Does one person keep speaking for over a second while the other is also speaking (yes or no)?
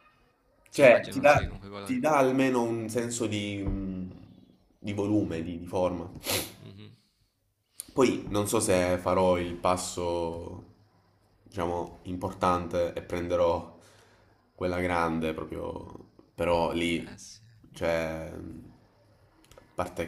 yes